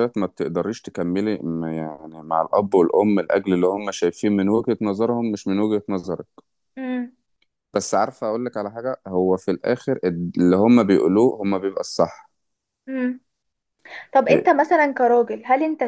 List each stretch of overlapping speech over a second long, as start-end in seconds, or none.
none